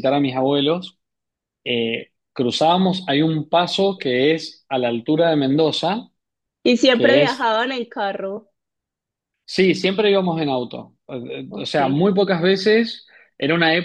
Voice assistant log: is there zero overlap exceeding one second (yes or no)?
yes